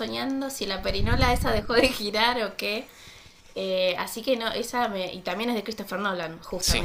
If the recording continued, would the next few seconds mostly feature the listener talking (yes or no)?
no